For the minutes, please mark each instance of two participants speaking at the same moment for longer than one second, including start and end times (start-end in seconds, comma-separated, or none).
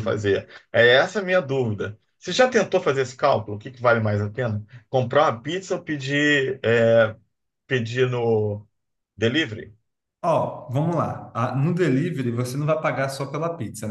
none